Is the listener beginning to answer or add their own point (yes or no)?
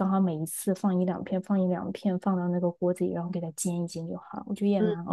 no